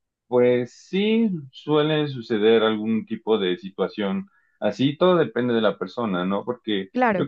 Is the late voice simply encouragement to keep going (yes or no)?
yes